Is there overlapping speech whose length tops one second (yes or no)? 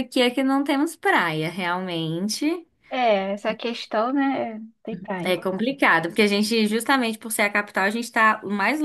no